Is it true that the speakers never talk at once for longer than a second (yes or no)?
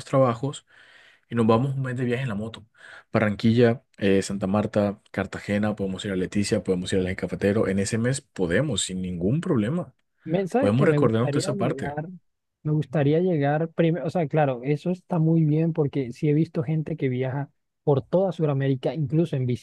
no